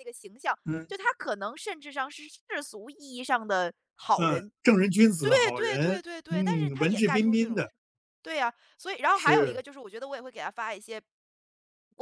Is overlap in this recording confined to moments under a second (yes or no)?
no